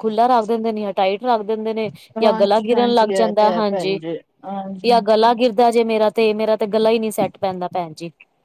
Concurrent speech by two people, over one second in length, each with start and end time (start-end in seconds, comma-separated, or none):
2.2-4.0